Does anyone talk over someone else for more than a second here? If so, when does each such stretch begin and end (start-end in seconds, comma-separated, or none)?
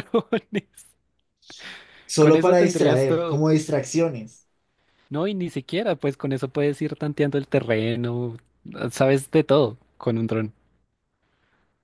2.2-3.5